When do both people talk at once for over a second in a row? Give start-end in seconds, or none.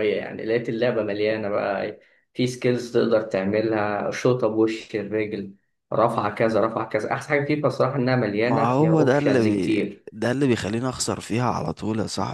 8.4-10.0